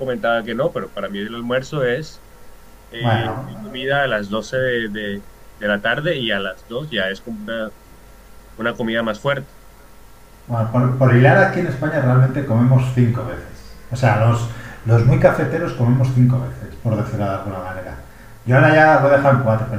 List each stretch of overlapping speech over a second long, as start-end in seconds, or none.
none